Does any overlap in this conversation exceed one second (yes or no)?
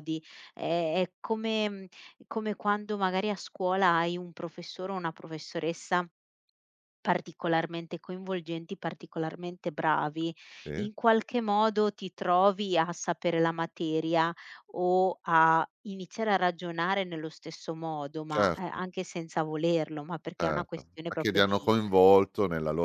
yes